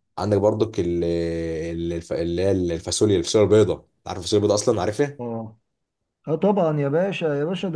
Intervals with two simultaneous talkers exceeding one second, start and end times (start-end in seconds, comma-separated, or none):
none